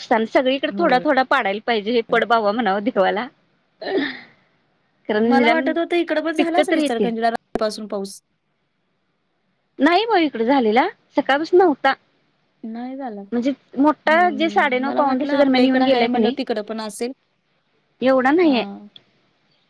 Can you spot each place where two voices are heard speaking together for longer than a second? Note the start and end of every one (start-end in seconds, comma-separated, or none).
14.1-16.4